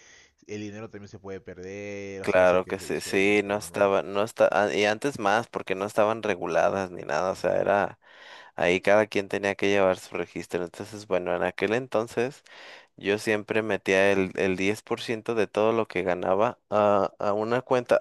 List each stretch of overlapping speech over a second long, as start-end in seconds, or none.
2.2-3.9